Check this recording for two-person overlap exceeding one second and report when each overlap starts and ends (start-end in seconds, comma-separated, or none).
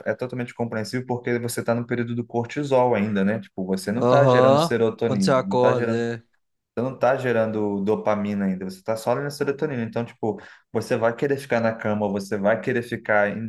4.0-6.1